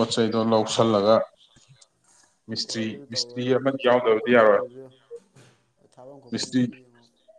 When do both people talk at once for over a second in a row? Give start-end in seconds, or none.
2.6-4.6